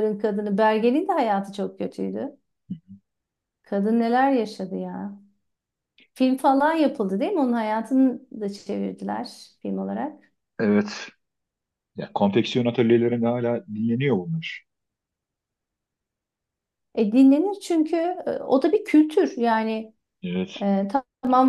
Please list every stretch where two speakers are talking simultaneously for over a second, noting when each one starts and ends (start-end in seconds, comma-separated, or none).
none